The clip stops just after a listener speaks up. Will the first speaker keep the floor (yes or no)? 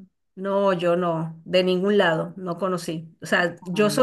yes